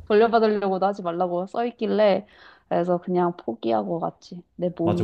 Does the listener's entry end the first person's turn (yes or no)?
yes